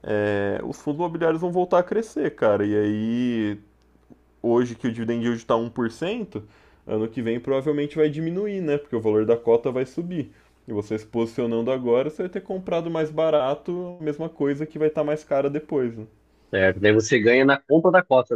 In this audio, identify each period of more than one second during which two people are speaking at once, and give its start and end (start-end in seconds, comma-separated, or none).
none